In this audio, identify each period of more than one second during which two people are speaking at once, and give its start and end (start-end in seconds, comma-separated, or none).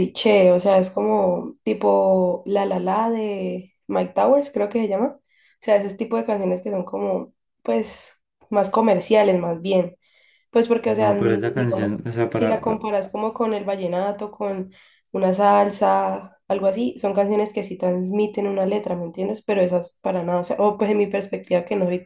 11.0-12.8